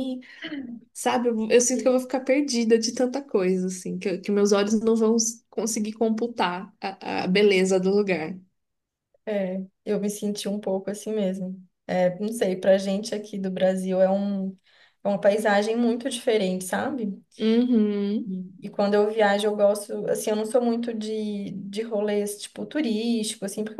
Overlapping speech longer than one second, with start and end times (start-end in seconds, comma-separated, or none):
none